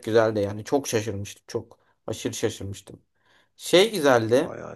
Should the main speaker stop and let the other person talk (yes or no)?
no